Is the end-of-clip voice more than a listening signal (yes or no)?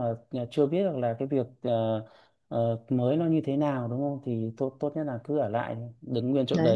yes